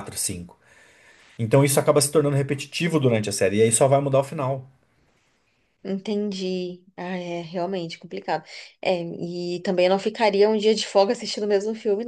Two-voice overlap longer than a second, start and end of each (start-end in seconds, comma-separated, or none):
none